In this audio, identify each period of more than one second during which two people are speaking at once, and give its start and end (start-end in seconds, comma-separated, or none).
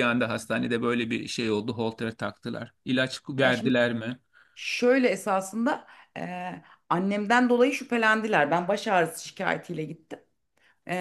none